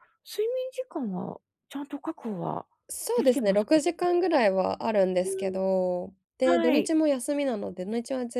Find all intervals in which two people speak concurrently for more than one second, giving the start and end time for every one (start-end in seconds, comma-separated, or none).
none